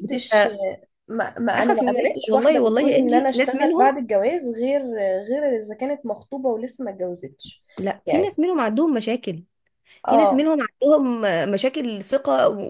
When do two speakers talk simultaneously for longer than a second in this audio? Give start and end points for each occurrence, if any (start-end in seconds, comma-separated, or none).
1.5-3.9